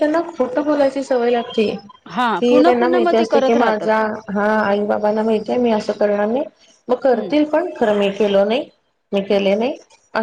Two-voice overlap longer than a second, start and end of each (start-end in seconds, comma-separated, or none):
2.4-3.9